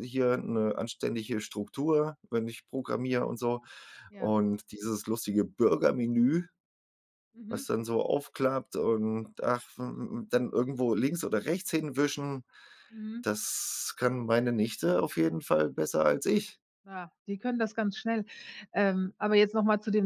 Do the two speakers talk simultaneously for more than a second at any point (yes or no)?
no